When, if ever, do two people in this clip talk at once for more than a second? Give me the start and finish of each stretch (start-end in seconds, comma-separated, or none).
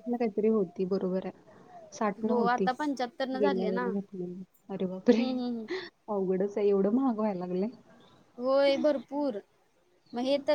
none